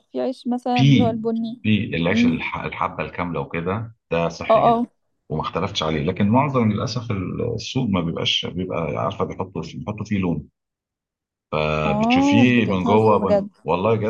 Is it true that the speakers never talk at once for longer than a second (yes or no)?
no